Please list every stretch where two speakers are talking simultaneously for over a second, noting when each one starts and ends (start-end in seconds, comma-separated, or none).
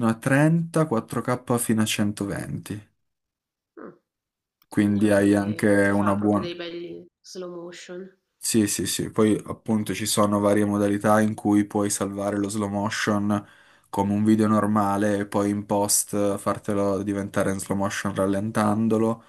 4.8-6.5